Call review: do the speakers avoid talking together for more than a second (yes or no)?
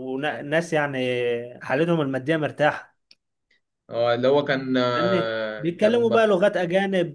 no